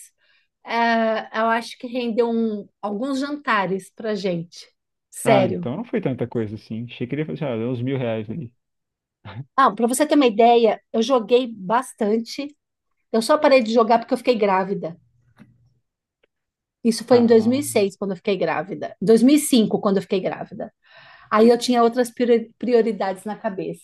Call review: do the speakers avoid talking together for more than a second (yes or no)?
yes